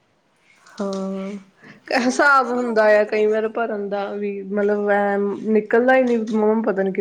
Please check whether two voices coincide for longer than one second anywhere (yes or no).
yes